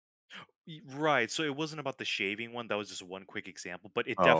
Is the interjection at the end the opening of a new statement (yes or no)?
no